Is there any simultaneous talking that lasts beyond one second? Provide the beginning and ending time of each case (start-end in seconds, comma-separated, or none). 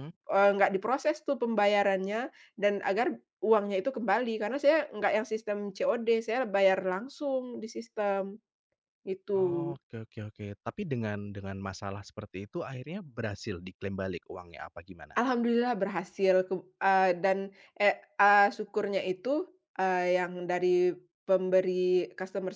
none